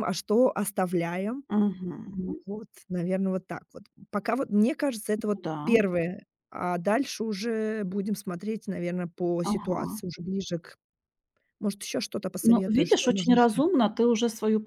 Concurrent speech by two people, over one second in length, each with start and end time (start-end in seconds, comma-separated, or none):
12.4-13.7